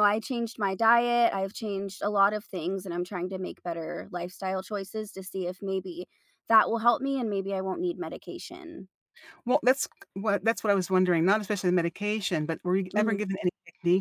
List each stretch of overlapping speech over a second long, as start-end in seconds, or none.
none